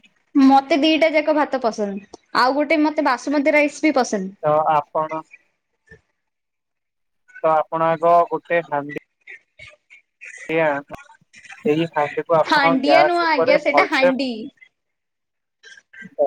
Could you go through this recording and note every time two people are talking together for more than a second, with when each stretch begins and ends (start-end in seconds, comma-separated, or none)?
12.5-14.1